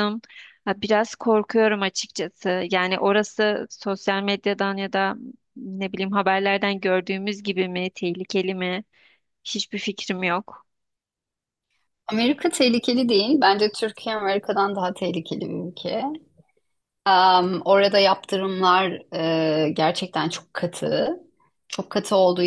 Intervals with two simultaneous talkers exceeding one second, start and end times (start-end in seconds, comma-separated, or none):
none